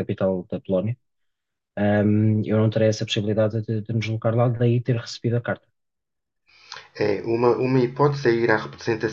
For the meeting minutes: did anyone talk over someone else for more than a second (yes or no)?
no